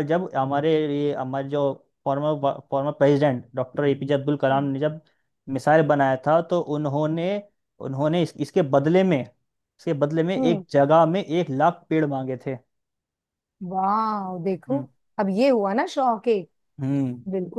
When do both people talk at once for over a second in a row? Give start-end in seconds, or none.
none